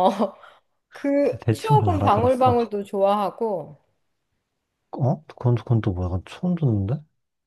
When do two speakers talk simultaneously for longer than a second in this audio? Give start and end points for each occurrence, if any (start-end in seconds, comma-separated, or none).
1.2-2.6